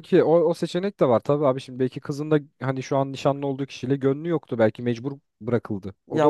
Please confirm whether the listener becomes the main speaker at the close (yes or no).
yes